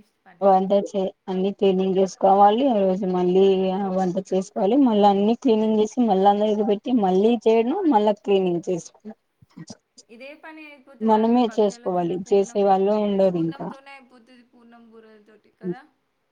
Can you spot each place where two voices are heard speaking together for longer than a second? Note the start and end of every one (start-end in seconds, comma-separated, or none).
11.1-12.6